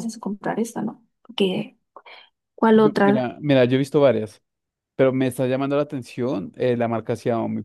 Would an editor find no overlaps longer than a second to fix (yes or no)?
yes